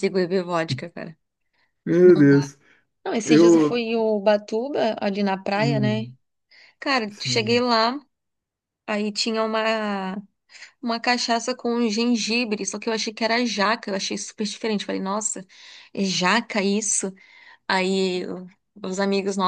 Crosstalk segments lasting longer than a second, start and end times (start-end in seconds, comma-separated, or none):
none